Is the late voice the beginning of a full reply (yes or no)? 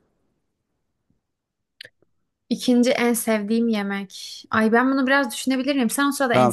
yes